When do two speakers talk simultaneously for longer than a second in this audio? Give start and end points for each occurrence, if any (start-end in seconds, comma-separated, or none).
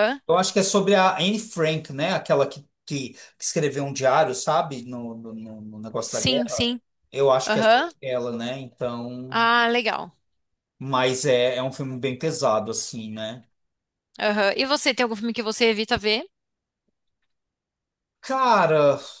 none